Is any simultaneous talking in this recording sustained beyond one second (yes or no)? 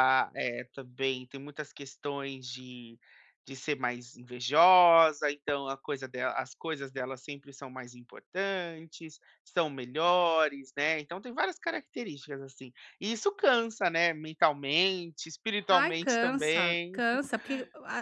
yes